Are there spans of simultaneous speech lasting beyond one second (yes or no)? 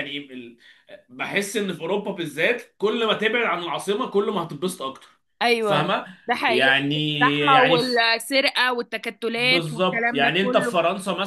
yes